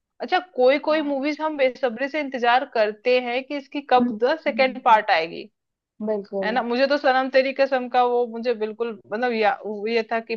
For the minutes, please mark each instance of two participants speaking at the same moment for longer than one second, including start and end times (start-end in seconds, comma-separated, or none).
4.0-5.4